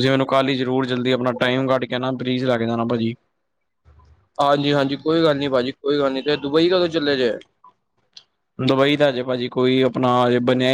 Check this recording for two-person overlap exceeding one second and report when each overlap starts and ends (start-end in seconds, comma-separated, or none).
none